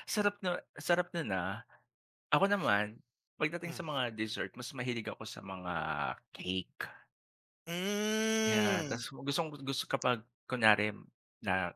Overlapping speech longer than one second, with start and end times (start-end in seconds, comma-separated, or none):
none